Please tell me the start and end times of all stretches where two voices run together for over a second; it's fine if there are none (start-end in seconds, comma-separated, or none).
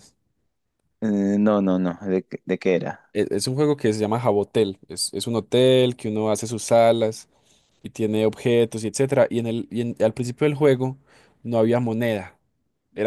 none